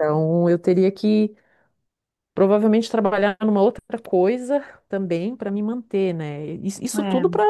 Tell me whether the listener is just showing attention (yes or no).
yes